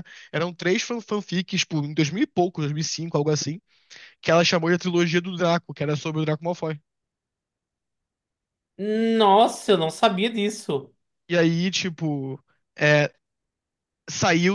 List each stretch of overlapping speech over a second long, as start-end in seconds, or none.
none